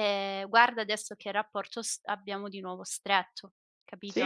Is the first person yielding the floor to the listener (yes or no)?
yes